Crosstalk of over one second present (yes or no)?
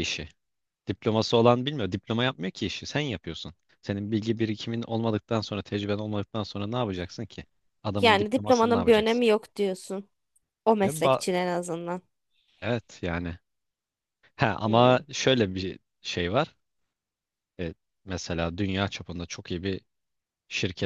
yes